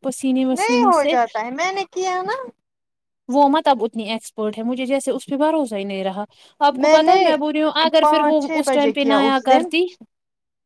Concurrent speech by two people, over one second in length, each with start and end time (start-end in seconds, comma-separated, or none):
8.0-9.7